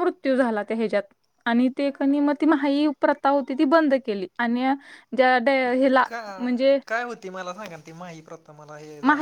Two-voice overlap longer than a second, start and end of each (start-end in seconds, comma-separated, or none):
none